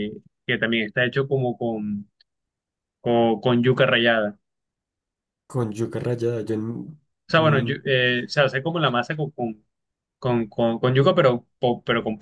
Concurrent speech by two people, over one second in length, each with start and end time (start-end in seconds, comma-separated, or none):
none